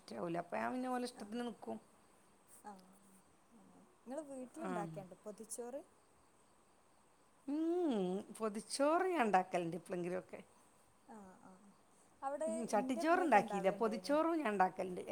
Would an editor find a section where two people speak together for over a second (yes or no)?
yes